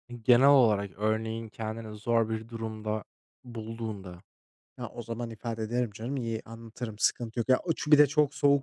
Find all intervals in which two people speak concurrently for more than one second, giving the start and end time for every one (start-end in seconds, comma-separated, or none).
none